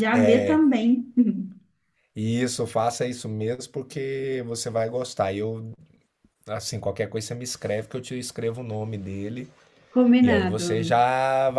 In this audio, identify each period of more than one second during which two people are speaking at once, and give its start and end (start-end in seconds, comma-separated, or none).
none